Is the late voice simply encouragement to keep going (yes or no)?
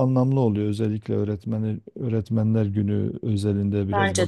yes